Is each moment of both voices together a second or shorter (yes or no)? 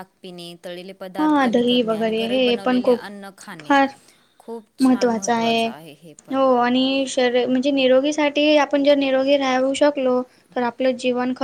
no